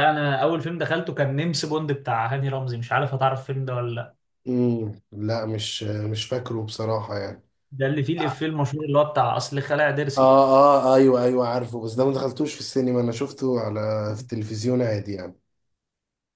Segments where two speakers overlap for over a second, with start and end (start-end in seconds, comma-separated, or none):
none